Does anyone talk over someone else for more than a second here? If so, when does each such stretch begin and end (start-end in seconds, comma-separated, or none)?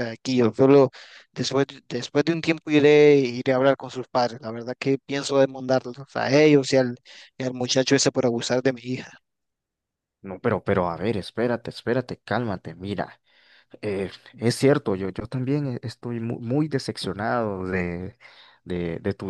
none